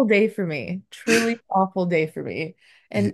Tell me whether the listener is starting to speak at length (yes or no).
no